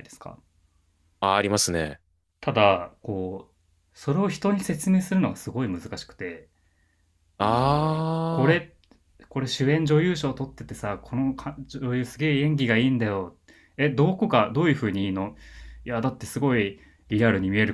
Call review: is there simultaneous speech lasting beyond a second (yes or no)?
yes